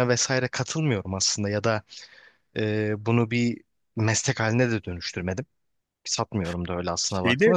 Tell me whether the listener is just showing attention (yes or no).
yes